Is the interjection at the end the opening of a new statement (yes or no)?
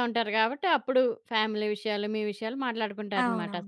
yes